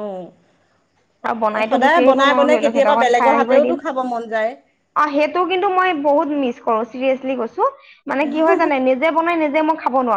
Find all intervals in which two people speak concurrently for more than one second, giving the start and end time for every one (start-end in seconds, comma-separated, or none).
1.6-3.8